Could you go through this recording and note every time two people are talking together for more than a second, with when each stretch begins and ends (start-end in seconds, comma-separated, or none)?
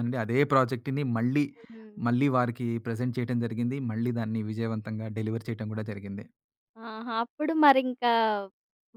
none